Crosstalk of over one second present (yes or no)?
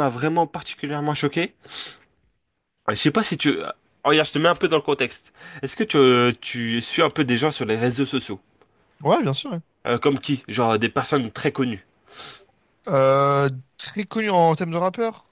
no